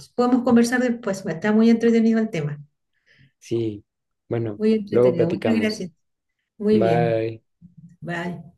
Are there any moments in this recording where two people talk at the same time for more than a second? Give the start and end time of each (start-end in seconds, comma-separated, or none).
4.6-5.9